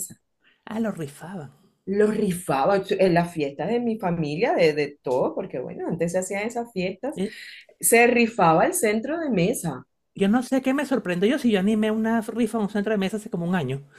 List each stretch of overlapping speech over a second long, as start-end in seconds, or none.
none